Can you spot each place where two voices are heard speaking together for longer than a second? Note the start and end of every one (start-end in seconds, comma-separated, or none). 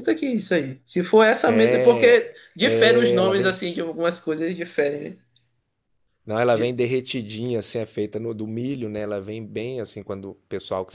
1.4-3.6